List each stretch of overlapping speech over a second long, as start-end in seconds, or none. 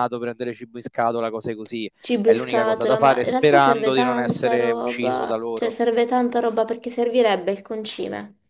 2.0-5.8